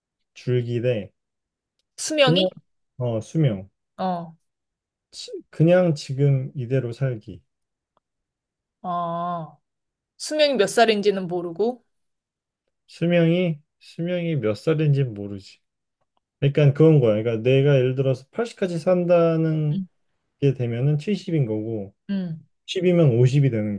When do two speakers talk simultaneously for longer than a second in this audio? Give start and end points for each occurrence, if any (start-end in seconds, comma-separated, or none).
none